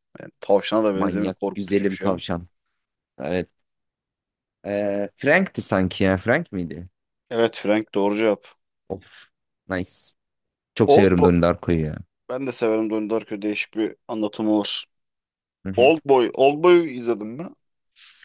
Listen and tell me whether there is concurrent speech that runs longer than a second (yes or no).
yes